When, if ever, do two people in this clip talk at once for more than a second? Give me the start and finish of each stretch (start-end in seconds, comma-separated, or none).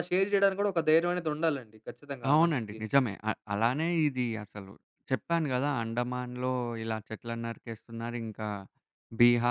none